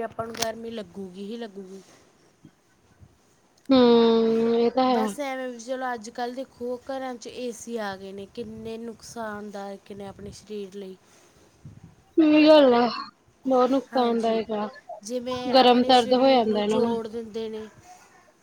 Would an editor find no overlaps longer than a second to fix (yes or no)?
no